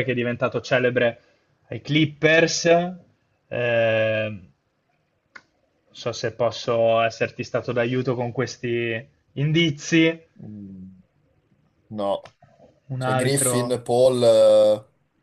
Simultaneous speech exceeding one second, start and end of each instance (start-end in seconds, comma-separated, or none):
none